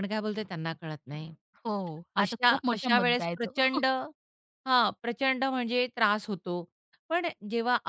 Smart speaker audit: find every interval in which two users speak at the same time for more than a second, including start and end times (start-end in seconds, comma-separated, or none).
2.2-3.8